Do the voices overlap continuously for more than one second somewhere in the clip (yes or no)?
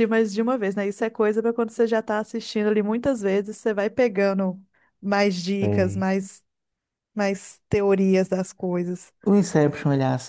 no